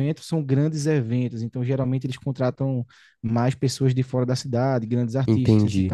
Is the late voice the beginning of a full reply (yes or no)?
yes